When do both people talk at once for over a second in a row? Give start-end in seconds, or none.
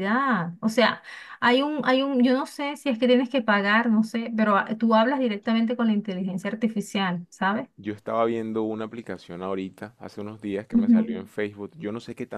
none